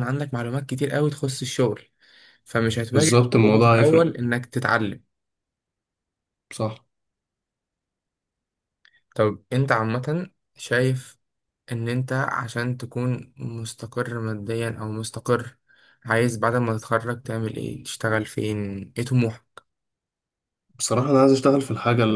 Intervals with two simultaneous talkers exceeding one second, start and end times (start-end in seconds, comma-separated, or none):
2.9-4.2